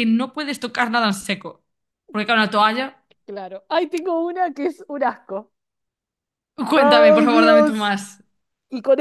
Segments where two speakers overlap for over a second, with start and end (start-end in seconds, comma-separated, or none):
6.7-8.0